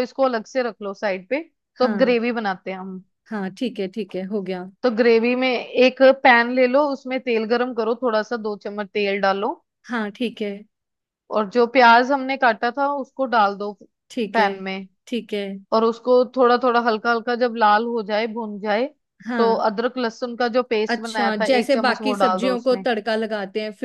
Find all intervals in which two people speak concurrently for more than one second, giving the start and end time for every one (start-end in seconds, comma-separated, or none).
20.9-22.9